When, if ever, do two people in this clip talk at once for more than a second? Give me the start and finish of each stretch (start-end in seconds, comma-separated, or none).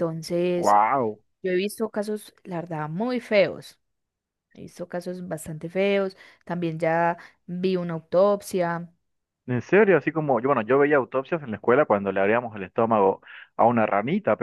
none